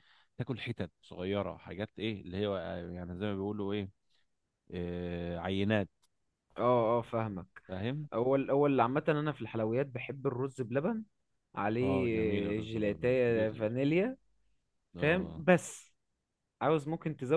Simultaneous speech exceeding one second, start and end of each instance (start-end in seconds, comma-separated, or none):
11.8-13.6